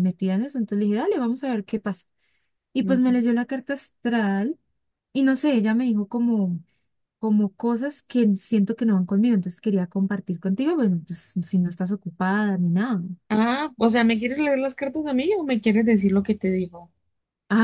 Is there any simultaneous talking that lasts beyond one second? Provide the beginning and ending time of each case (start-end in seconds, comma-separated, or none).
none